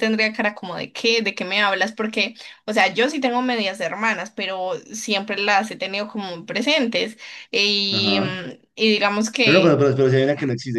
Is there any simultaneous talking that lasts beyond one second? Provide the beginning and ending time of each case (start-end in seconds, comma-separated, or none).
none